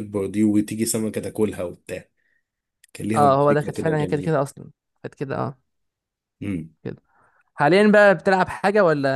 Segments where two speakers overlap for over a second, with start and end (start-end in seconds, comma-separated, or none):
3.1-4.4